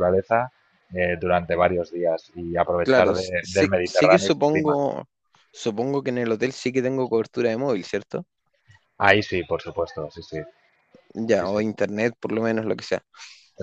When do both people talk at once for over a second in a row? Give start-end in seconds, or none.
2.8-4.8